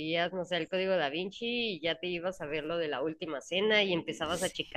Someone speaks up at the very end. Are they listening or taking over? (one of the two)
listening